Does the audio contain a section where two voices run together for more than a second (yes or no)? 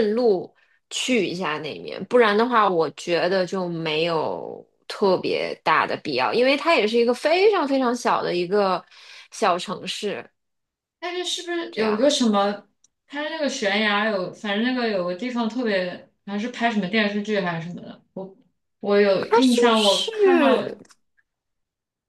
yes